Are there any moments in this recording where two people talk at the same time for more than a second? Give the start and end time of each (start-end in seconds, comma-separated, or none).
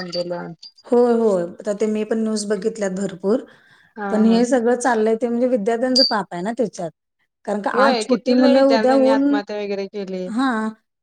7.8-9.4